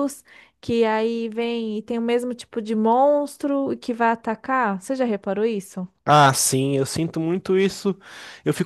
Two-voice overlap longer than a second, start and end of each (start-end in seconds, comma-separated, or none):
none